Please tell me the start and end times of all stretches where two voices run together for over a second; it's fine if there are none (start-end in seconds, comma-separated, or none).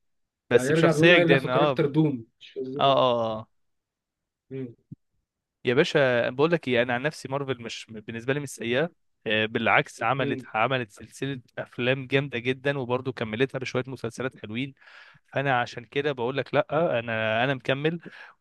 0.6-1.8